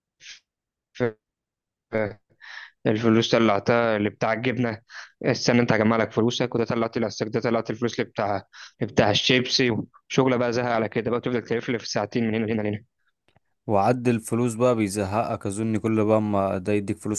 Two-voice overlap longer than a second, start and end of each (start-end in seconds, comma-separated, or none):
none